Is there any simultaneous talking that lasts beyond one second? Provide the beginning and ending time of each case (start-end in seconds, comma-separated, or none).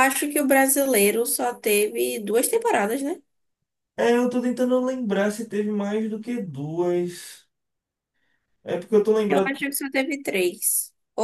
none